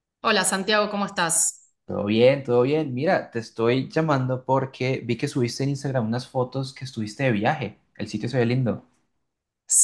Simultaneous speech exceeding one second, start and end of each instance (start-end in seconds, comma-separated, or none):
none